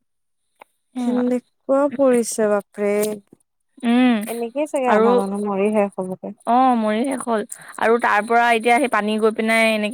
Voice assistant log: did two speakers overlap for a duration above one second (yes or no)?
no